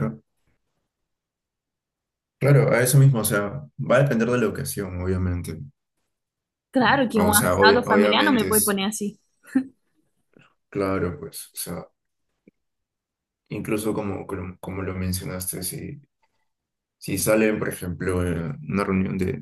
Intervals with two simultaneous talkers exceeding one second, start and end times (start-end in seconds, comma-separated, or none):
6.8-8.8